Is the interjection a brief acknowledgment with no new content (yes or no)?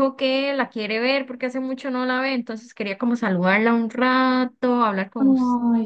no